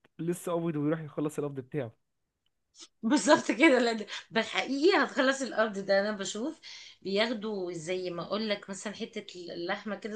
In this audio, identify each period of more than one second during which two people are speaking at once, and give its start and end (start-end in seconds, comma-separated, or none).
none